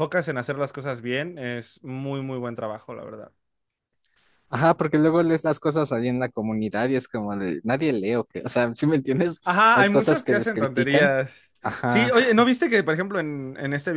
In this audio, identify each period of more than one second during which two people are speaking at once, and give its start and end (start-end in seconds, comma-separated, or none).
9.4-11.2